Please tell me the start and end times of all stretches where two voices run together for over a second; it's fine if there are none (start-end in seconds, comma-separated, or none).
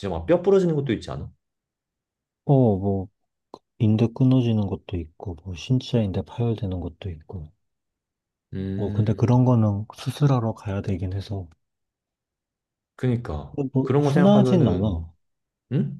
13.5-15.0